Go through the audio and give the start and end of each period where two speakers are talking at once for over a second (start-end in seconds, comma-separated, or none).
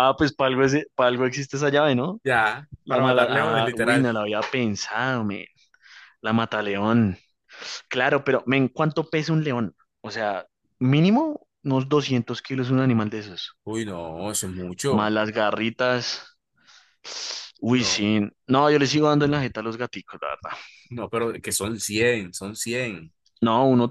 2.8-4.1